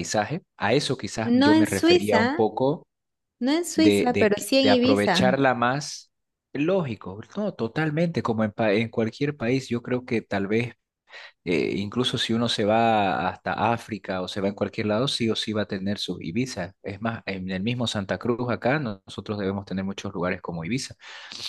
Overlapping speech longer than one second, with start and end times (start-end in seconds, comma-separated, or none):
1.2-2.5, 3.8-5.4